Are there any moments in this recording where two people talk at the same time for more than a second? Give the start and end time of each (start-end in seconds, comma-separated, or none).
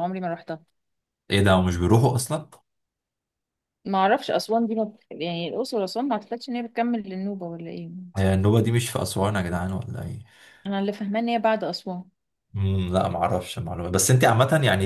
none